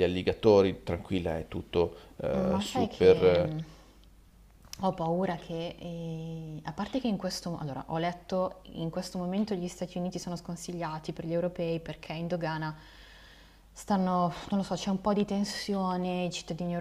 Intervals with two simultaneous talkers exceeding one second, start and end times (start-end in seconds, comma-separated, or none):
2.3-3.5